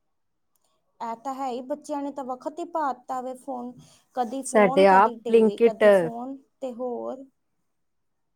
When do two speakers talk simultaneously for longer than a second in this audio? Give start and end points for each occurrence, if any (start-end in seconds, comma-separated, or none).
4.5-6.2